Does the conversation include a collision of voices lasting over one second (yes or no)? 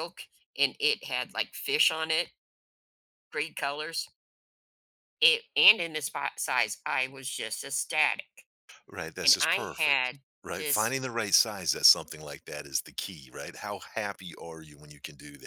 yes